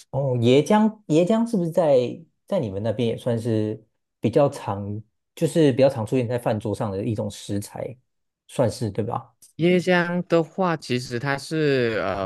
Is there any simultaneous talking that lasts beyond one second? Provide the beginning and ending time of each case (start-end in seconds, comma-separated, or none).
none